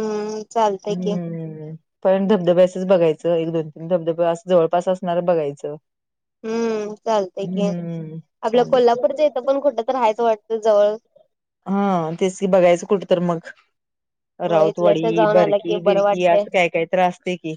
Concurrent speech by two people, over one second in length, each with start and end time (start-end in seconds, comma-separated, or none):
14.5-16.4